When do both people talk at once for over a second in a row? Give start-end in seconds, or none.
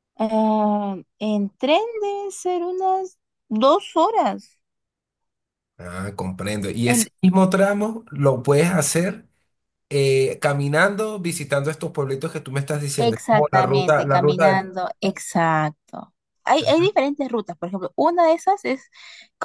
13.0-14.7